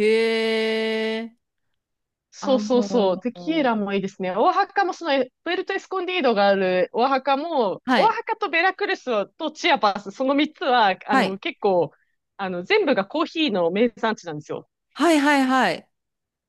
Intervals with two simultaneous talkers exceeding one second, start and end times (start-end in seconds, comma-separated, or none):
2.4-3.7